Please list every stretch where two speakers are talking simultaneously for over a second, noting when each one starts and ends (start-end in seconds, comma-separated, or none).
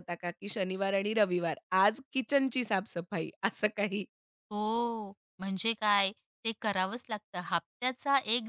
none